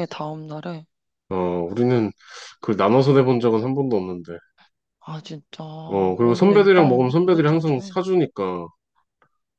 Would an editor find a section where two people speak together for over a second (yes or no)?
yes